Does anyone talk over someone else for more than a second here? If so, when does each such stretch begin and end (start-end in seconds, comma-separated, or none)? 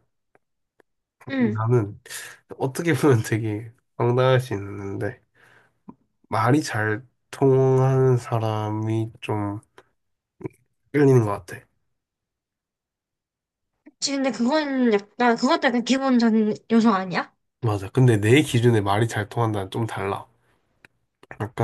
none